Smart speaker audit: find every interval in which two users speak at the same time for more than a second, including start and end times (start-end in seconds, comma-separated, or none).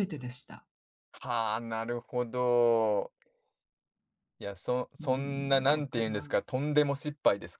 5.0-6.4